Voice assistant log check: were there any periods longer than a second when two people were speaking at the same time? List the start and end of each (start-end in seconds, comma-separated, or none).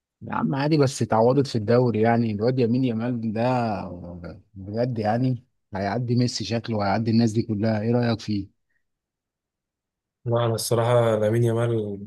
none